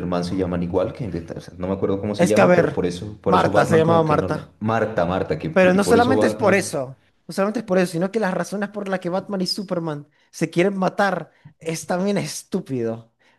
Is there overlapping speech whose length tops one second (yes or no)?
yes